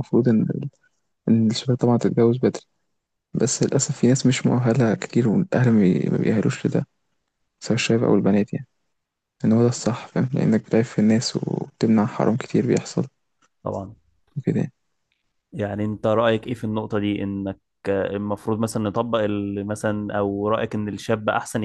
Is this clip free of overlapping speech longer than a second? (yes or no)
yes